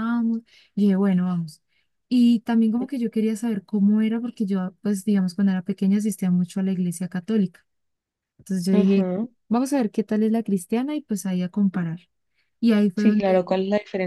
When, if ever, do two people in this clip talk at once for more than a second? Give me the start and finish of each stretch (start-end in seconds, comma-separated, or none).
none